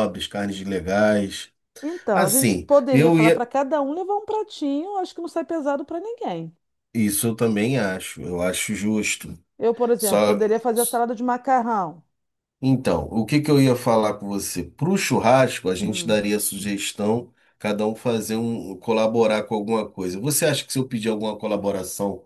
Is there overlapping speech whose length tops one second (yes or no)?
yes